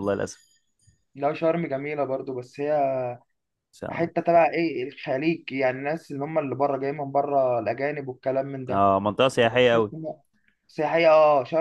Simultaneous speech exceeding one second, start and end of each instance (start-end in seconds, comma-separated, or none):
none